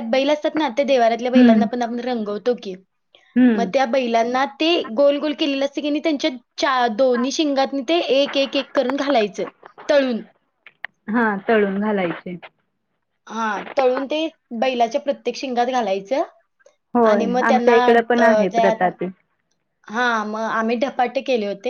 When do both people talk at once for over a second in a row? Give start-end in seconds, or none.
17.1-18.9